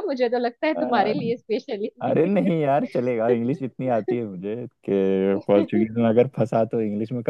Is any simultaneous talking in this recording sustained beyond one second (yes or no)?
no